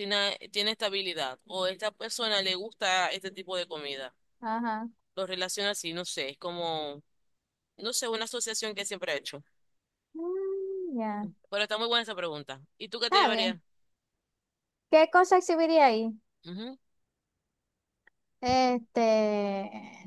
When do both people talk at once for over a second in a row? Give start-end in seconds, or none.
none